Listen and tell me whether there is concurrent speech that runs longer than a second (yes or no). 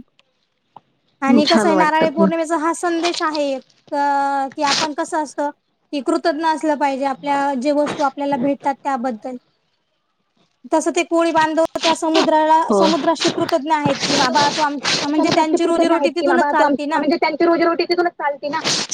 yes